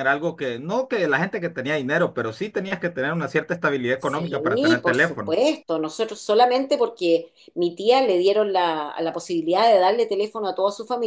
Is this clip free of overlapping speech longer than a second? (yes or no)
no